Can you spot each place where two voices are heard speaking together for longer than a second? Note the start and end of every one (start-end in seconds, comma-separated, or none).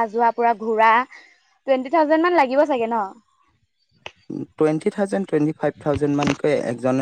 none